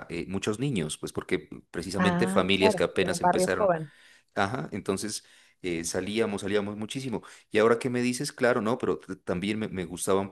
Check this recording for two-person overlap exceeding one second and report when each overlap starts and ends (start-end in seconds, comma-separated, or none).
2.0-3.7